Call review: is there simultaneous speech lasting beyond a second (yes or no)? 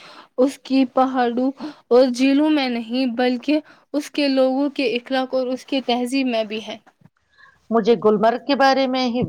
no